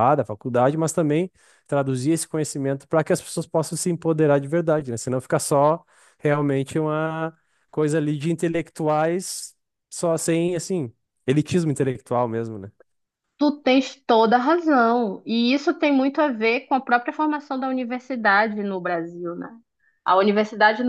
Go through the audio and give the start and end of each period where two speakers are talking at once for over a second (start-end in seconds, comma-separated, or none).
none